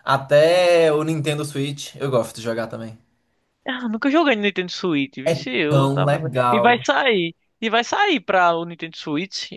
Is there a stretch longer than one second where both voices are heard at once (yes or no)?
yes